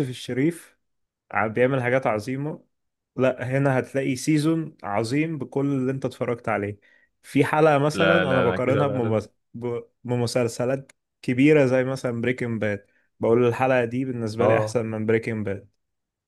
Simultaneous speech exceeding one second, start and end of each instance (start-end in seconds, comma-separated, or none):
7.9-9.2